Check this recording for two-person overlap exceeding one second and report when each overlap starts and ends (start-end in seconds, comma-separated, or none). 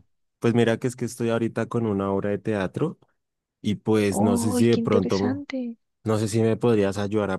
4.1-5.4